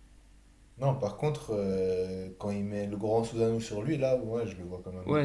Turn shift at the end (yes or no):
yes